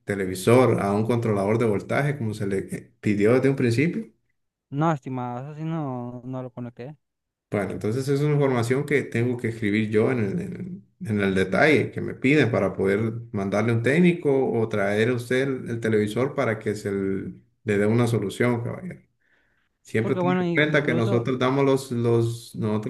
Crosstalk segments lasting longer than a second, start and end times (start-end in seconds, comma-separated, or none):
19.8-21.3